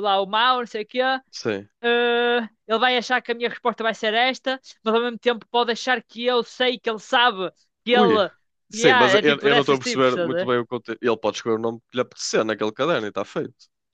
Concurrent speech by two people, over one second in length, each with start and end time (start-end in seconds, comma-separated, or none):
8.7-10.6